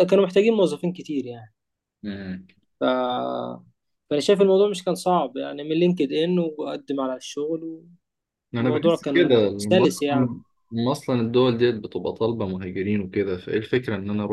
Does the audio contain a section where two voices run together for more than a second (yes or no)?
yes